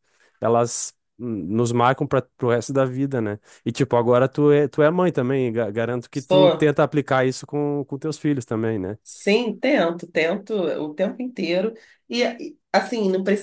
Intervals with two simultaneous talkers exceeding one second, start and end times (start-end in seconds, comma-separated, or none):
none